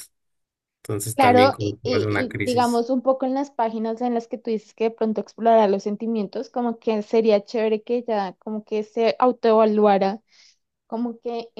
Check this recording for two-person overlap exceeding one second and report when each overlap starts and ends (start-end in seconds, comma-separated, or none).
1.1-2.8